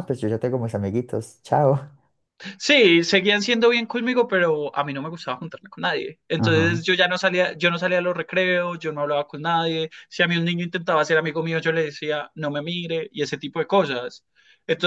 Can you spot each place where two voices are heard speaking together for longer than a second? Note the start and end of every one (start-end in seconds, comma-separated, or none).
none